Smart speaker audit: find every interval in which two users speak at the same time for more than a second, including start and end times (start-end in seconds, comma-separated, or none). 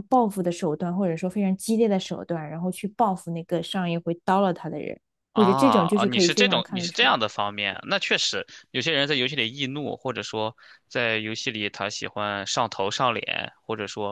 5.3-7.1